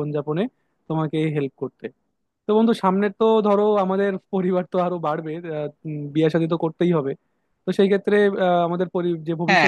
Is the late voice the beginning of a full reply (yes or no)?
no